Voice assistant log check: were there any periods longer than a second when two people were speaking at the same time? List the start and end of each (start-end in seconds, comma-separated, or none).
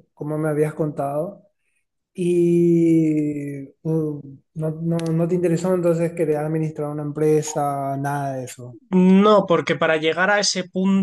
none